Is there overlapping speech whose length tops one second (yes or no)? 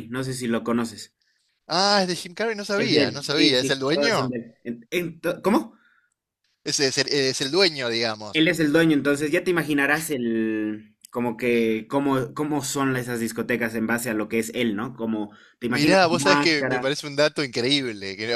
yes